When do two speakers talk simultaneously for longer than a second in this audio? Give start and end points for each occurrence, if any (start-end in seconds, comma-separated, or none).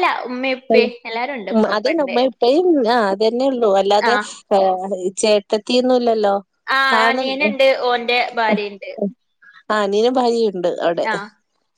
none